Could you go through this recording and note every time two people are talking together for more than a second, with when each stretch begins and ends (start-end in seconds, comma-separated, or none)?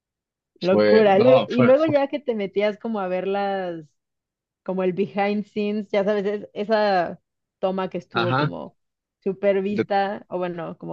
0.6-1.9